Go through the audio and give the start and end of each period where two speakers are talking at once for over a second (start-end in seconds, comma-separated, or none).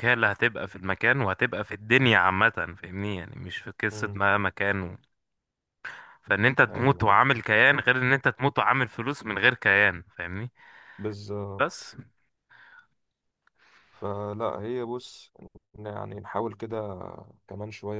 none